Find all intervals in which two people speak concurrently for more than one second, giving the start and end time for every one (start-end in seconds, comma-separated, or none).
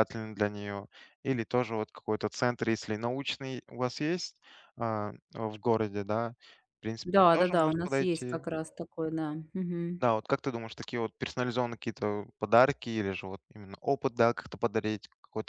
7.0-8.4